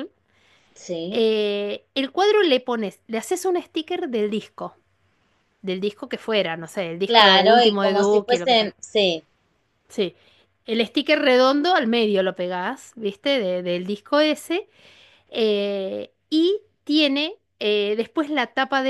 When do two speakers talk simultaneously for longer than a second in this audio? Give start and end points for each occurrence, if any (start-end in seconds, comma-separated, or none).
7.0-8.8